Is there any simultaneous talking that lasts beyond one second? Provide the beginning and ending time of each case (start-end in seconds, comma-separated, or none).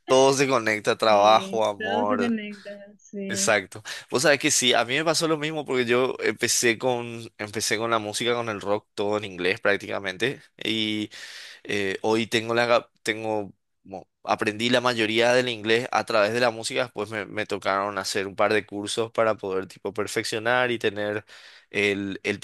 1.0-2.4